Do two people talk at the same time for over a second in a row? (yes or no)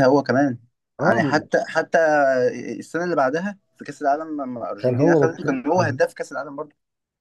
yes